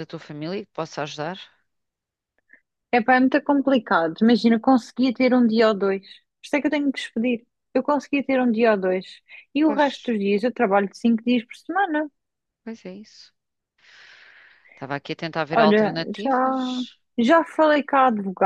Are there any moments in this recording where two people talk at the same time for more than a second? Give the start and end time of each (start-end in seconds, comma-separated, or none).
15.5-16.8